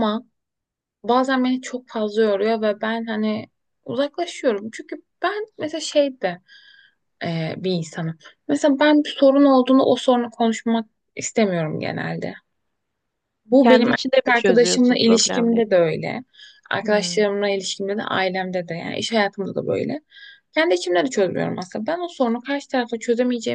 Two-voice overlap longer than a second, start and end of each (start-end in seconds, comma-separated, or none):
13.6-15.8